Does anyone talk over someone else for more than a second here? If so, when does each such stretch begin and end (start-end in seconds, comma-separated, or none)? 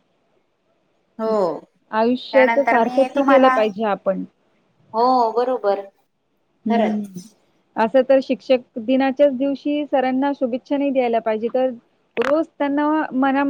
2.3-3.5